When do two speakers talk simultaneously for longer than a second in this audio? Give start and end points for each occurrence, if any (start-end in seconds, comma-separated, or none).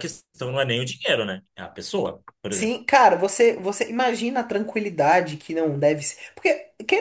none